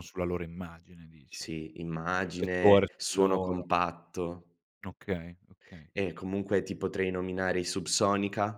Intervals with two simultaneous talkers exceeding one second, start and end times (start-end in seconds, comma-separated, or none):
2.2-3.7